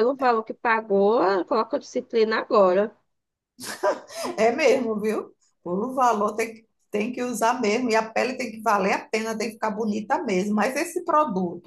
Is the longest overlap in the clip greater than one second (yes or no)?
no